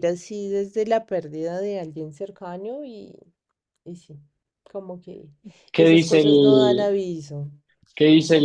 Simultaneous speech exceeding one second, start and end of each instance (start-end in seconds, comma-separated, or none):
5.8-7.0